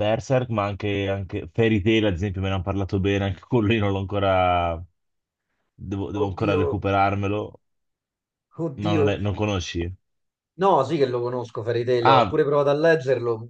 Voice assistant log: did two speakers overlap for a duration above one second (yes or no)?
no